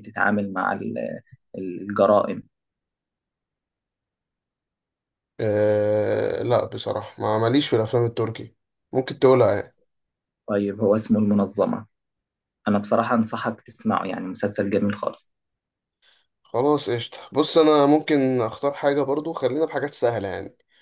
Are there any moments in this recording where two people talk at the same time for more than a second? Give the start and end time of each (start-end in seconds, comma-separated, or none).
none